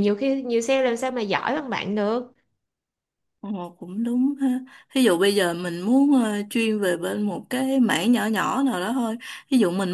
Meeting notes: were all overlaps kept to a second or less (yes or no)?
yes